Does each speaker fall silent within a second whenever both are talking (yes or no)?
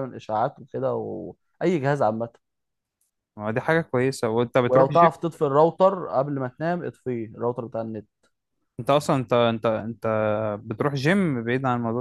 yes